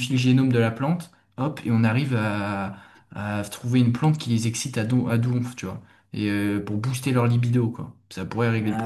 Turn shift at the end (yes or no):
yes